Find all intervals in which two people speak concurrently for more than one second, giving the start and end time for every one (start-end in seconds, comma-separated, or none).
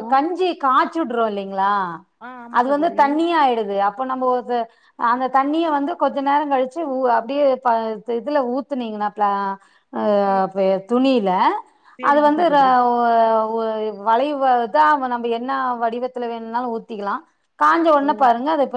none